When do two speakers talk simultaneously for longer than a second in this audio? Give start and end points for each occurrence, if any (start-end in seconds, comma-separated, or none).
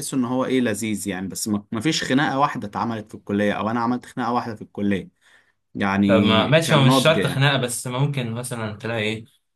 6.1-7.5